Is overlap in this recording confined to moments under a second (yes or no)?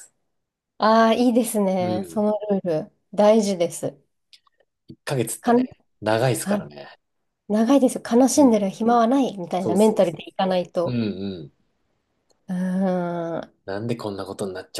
no